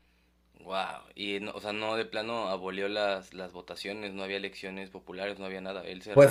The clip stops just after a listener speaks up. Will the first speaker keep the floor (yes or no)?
no